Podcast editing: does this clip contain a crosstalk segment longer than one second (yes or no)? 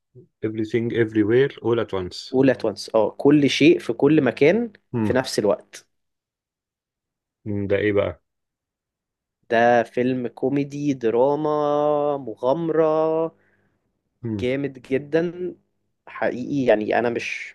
no